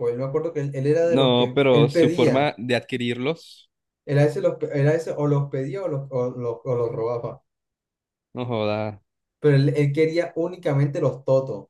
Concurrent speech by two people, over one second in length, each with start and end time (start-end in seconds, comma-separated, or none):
1.0-2.5